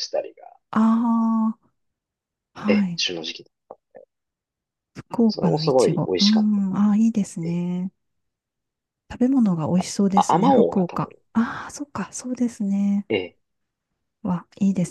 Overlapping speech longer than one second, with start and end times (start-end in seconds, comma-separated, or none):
5.3-6.8, 9.7-11.1